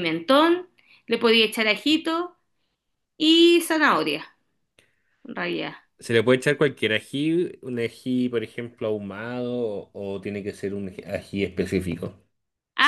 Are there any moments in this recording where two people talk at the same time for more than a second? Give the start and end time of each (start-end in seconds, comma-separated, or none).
none